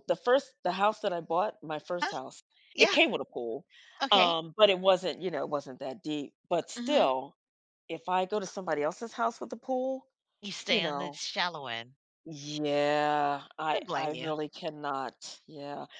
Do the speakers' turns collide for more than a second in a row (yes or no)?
no